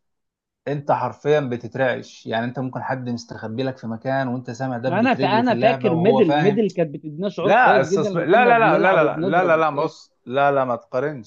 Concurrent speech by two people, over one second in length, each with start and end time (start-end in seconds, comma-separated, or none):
4.8-6.6, 7.4-9.9